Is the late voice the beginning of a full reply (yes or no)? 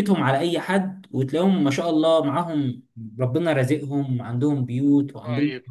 yes